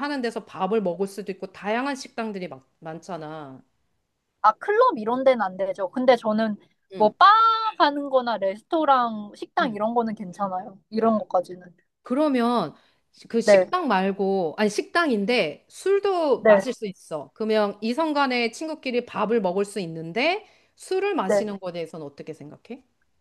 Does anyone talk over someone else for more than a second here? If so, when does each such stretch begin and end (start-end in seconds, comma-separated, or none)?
none